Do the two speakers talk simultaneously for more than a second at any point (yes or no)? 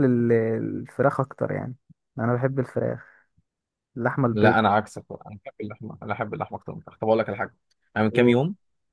no